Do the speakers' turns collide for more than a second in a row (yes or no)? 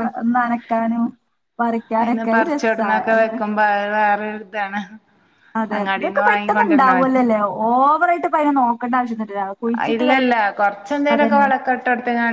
yes